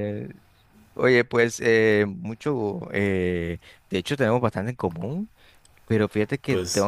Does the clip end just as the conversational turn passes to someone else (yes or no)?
no